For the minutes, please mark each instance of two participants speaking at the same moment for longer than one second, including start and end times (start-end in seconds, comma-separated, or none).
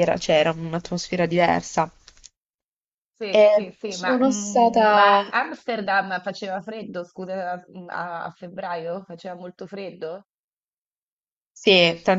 3.3-5.3